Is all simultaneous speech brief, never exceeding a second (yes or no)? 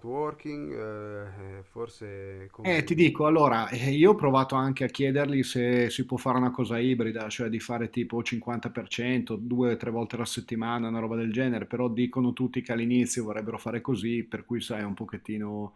yes